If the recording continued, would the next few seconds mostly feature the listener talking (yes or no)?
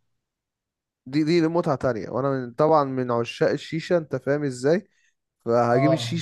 no